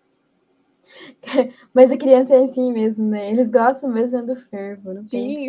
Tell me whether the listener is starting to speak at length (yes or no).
yes